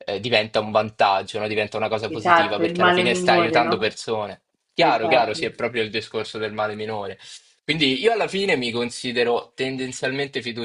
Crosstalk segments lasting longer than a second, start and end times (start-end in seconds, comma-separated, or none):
2.1-4.0